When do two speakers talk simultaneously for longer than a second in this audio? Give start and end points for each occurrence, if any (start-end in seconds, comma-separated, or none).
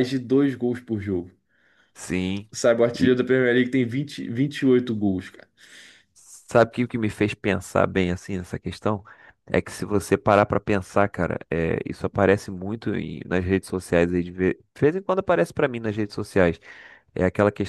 none